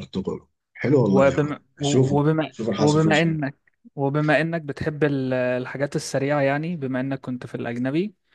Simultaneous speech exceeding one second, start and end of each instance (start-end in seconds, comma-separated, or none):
1.0-3.4